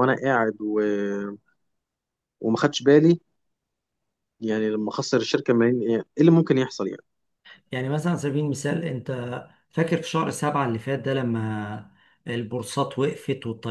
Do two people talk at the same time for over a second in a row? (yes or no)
no